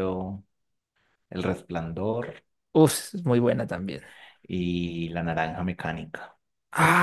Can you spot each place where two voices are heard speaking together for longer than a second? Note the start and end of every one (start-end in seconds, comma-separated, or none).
none